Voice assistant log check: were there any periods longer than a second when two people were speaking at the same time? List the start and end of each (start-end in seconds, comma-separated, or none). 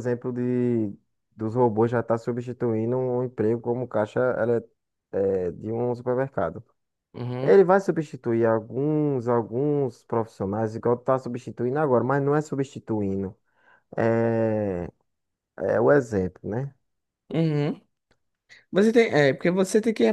none